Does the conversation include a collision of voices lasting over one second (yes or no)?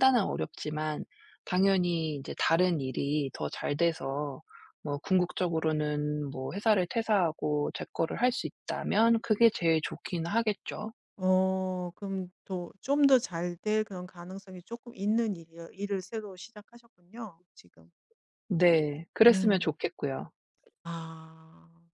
no